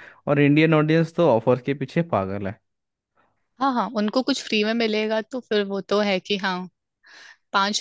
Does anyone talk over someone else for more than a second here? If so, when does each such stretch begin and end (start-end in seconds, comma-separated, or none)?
none